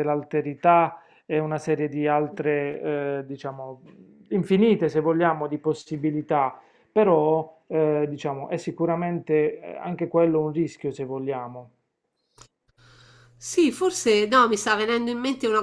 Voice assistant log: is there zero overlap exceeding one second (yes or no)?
yes